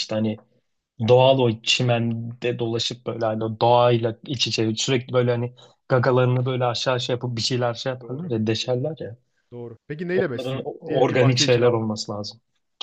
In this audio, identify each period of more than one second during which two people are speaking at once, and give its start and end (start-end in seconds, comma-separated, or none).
10.1-11.9